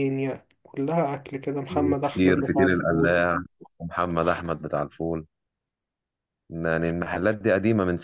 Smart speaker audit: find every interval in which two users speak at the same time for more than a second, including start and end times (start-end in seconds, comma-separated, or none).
1.7-3.2